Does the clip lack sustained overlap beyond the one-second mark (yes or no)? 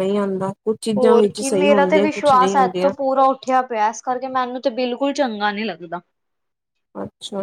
no